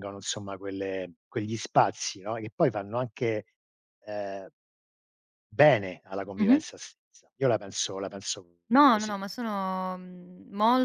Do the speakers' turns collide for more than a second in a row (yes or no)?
no